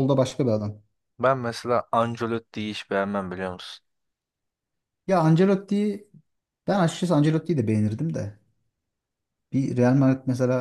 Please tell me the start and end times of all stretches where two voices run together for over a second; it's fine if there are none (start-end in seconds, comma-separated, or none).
none